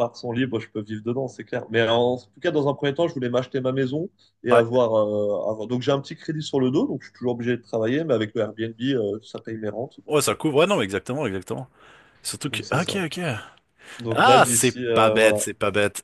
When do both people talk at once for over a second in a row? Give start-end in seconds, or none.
14.1-15.4